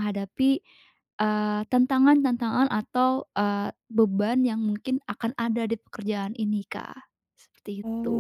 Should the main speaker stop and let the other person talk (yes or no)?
yes